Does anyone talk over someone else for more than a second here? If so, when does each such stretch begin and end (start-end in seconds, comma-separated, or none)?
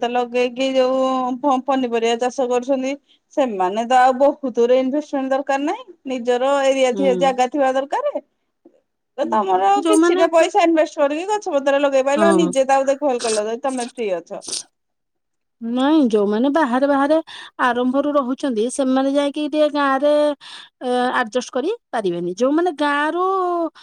none